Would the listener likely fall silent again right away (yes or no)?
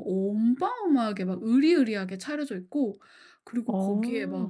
yes